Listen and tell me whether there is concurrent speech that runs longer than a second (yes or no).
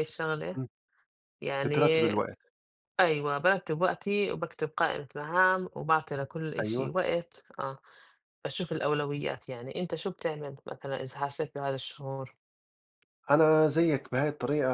no